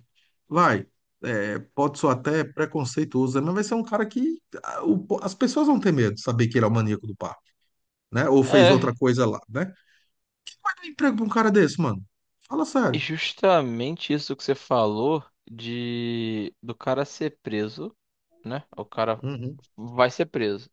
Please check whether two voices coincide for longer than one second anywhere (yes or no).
no